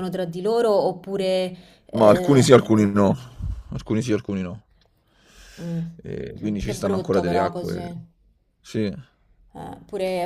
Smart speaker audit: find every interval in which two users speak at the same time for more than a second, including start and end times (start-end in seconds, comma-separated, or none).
6.6-7.9